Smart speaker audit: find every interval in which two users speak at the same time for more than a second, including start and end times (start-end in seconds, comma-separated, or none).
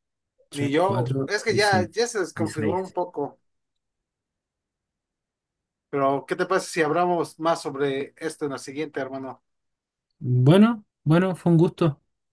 0.5-2.9